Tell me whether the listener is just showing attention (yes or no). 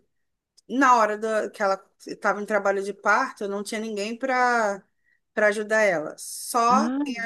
yes